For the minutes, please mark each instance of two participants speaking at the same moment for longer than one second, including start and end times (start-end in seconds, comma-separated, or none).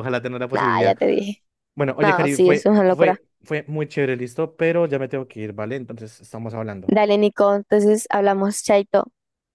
2.0-3.2